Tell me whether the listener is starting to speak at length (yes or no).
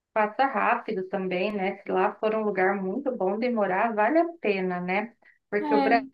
no